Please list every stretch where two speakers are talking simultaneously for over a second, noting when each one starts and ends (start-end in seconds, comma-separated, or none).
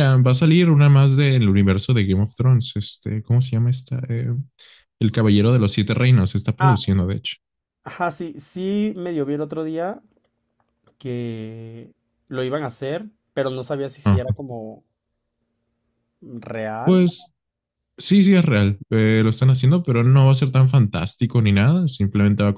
none